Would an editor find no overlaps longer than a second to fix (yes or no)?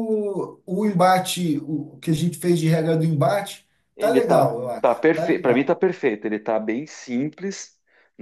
no